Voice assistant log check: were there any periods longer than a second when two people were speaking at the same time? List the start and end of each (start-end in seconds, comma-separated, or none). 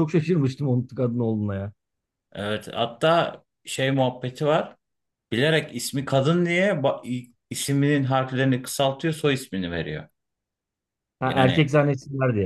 none